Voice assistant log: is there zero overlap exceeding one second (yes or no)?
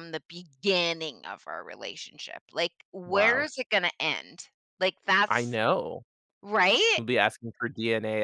yes